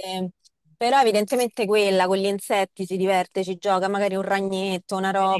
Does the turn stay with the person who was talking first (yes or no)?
no